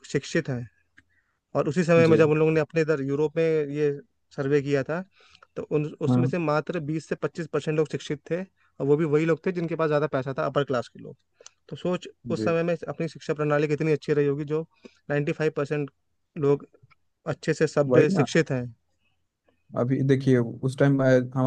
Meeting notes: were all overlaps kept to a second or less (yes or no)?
yes